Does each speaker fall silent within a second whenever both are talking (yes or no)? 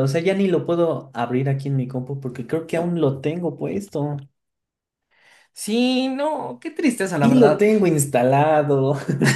yes